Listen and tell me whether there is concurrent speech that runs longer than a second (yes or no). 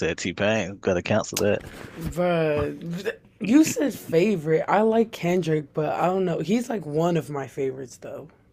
no